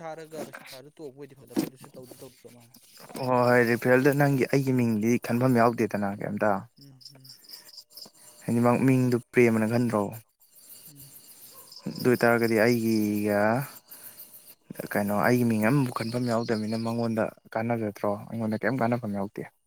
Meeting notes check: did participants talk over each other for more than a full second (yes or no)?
no